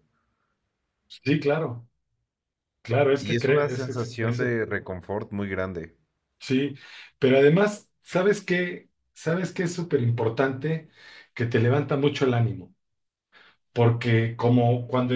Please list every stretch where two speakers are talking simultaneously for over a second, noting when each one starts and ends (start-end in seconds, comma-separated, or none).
3.2-4.6